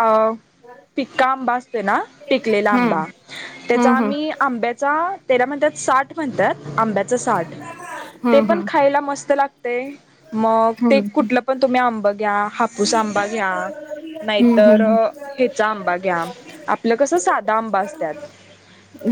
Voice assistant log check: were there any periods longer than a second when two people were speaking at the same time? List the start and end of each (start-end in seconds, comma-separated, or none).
none